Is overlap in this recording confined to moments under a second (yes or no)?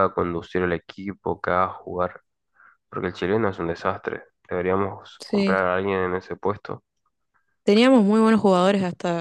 yes